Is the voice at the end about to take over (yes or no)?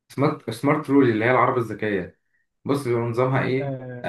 yes